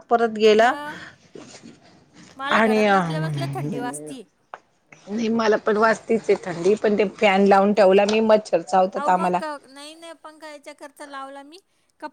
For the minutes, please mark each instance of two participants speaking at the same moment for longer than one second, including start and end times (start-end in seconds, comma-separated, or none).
none